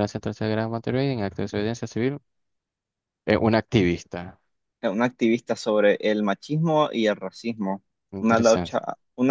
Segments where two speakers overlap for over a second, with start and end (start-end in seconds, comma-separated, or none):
none